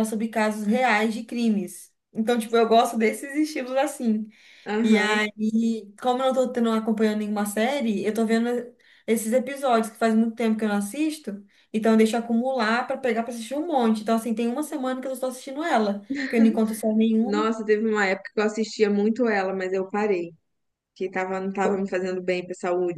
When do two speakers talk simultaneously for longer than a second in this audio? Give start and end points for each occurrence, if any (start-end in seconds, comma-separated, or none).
none